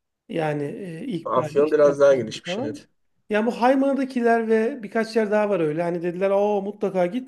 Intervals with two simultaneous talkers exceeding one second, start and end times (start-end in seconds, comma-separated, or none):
1.2-2.8